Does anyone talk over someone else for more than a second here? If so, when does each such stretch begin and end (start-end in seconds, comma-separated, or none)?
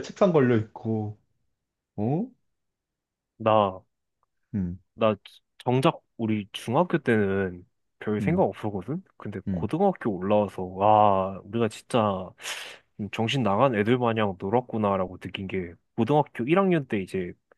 none